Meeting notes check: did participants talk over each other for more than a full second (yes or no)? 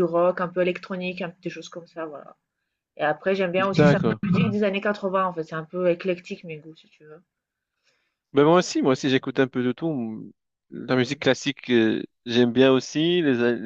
no